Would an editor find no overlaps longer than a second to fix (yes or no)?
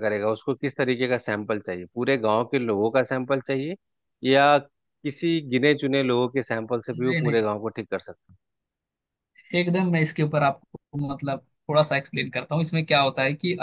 yes